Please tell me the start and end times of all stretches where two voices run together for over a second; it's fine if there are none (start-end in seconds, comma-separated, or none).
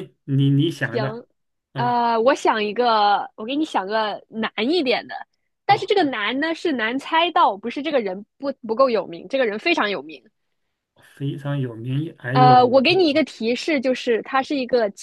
none